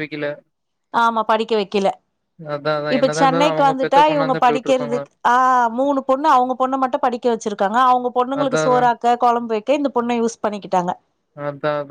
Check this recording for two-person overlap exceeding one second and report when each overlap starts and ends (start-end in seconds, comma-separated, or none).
3.0-5.0